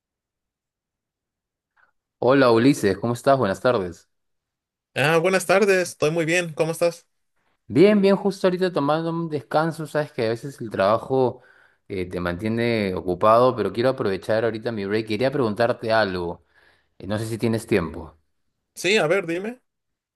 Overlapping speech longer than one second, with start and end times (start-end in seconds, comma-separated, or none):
none